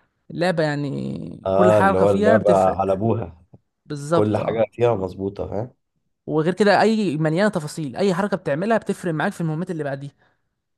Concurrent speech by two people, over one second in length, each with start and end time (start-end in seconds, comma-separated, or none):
1.5-3.0